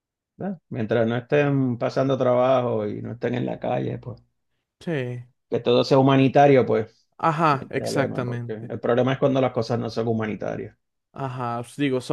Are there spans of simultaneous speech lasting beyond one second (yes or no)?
yes